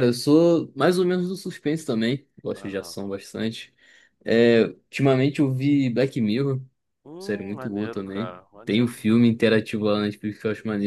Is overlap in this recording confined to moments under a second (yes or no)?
no